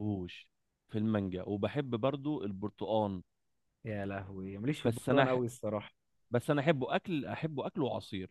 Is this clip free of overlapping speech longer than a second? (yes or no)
yes